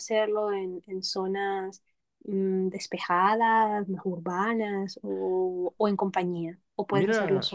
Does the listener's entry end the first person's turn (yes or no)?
yes